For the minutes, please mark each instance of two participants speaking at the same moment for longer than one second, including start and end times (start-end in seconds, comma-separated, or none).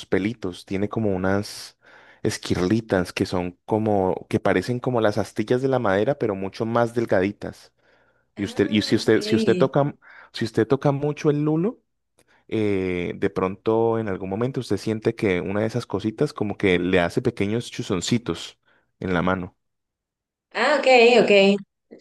8.4-9.7